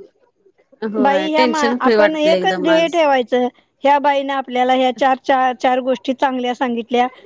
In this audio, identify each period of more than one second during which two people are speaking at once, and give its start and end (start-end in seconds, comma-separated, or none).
1.0-3.0